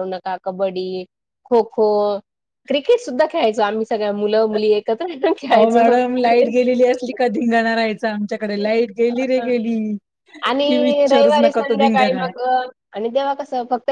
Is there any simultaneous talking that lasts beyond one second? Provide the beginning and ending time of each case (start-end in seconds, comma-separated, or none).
10.7-12.2